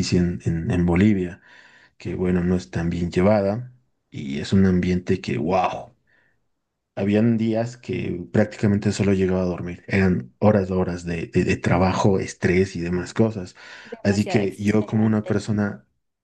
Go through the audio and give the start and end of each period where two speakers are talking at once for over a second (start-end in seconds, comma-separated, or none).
14.0-15.4